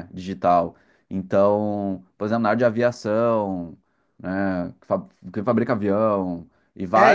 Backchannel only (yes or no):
no